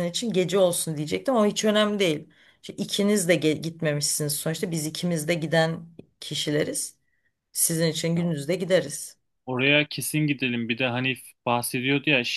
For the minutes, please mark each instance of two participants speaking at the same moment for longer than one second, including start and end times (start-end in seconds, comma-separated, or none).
none